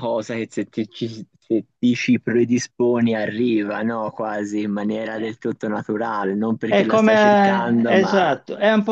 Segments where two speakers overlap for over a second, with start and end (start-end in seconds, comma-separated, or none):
6.7-8.3